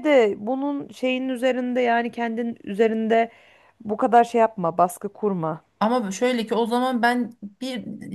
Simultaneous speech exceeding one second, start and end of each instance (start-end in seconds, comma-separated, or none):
none